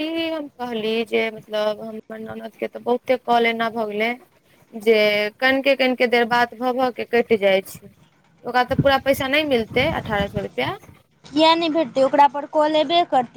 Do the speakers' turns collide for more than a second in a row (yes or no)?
no